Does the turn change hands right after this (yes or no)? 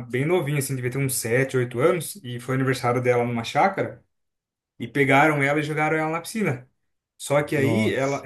no